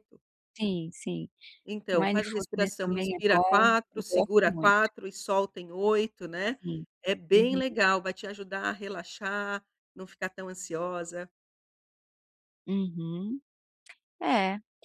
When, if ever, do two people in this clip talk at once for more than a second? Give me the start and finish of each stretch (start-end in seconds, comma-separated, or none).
1.9-4.8